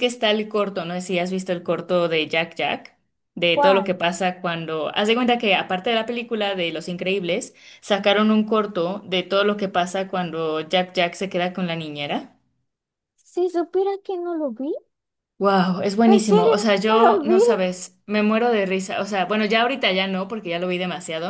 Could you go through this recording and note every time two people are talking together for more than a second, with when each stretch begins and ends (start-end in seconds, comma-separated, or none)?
16.1-17.4